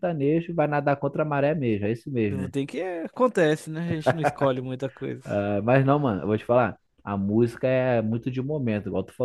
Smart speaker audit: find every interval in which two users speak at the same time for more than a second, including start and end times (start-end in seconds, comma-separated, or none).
none